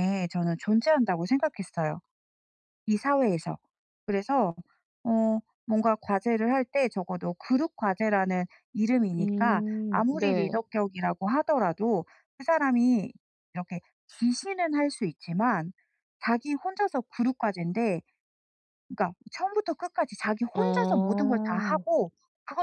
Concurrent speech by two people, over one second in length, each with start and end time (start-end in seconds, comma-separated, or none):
9.2-10.6